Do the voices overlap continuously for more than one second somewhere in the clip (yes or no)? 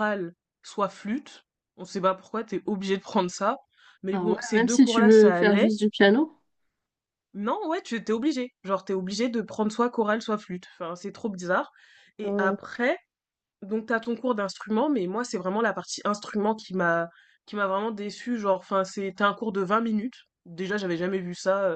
yes